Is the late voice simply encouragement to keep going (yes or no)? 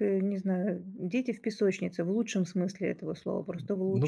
yes